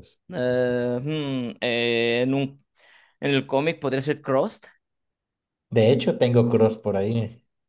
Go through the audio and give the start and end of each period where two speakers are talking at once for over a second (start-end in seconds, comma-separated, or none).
none